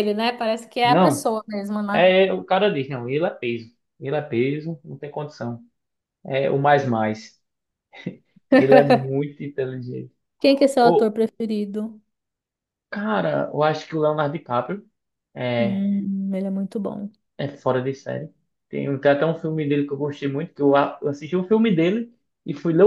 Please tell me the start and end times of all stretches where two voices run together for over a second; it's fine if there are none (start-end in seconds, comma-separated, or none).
none